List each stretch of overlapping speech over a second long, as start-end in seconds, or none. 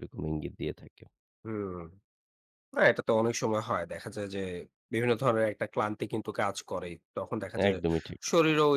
none